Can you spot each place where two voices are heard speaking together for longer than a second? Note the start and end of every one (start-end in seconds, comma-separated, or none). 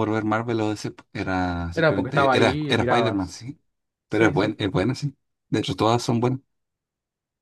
1.7-3.4